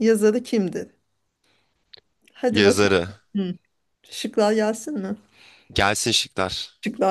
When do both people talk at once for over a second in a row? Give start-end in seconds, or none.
none